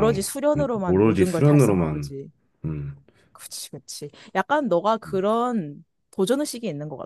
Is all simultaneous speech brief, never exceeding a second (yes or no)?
no